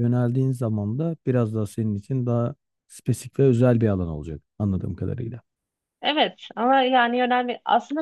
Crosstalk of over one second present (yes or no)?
no